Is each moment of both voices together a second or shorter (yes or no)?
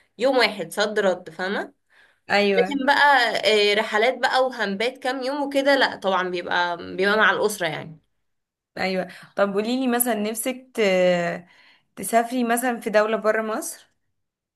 yes